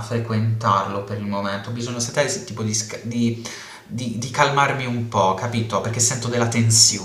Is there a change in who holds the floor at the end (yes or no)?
yes